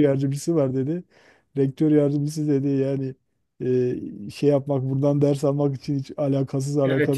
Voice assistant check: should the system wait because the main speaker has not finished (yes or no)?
yes